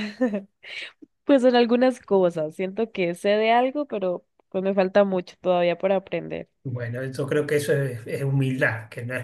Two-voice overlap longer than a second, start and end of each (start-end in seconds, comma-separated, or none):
none